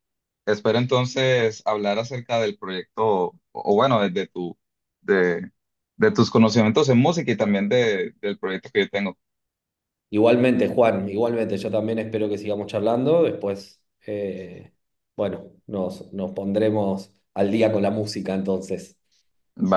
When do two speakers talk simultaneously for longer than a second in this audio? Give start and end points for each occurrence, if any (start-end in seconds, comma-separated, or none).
none